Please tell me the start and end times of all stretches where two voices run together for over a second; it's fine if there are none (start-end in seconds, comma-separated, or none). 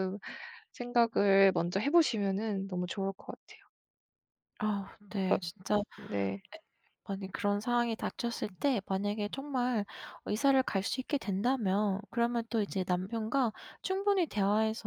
none